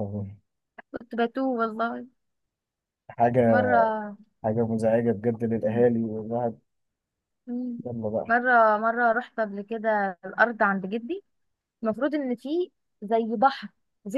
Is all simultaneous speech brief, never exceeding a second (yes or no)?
yes